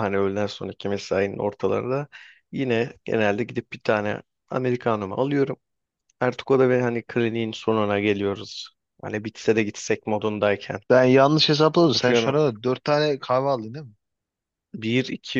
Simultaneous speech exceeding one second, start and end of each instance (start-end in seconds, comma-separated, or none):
none